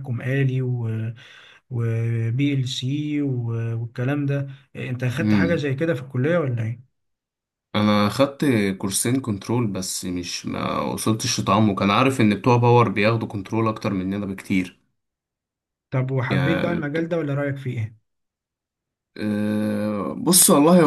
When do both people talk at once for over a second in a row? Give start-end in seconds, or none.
none